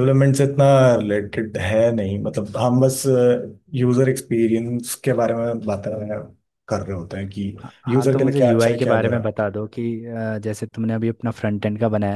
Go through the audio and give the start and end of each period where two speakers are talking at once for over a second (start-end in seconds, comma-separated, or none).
7.6-9.2